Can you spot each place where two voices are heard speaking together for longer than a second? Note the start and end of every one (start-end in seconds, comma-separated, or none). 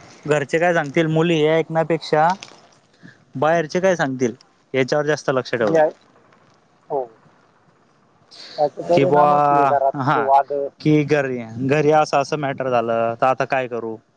none